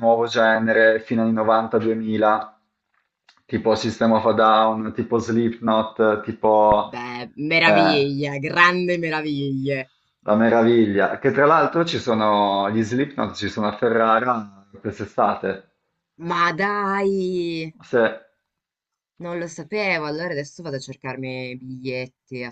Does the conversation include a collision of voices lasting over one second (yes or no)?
no